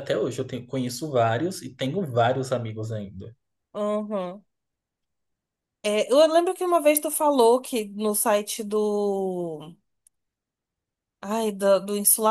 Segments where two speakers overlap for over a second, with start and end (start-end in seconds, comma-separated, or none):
none